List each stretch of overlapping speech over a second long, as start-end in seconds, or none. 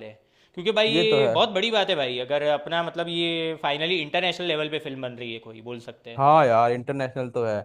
none